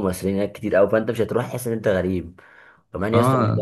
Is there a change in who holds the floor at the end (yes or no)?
no